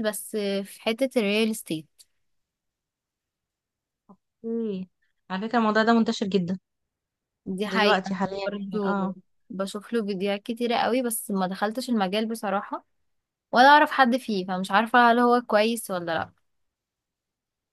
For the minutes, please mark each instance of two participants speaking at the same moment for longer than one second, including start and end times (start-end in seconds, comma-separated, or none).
7.7-9.1